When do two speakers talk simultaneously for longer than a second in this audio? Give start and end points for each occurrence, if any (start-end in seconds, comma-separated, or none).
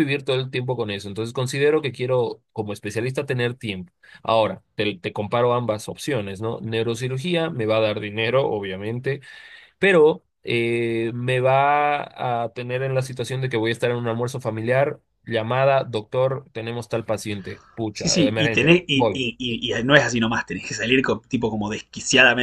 17.9-19.2